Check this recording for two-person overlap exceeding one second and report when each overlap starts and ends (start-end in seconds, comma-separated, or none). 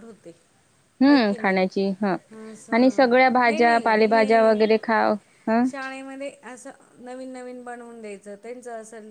2.7-4.6